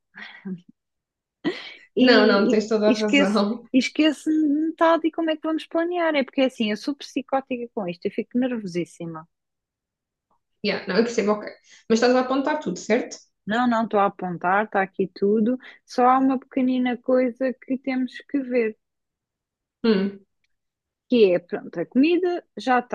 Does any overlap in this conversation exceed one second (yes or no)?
yes